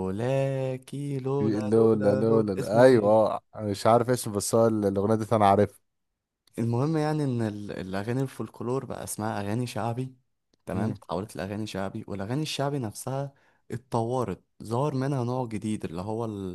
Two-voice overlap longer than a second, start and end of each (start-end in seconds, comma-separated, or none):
1.4-3.3